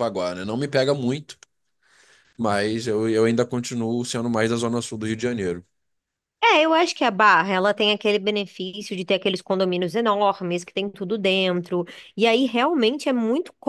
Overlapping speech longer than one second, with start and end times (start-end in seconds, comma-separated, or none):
none